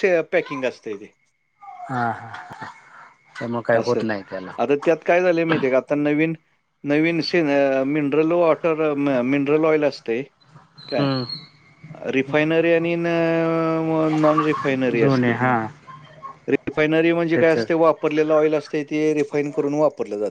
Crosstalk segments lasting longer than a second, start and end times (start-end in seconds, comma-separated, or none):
none